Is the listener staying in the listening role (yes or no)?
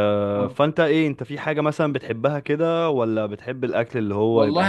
no